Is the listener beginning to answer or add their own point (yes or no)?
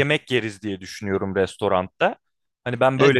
yes